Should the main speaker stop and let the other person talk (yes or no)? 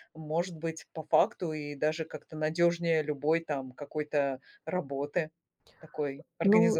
yes